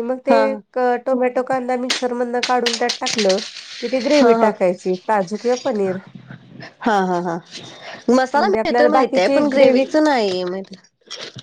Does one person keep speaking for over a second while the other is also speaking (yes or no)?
yes